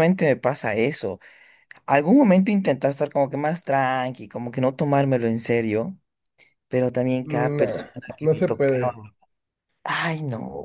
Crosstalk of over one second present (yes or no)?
yes